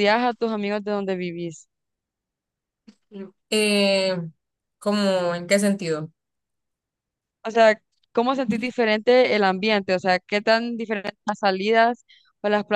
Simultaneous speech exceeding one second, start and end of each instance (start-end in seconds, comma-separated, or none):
none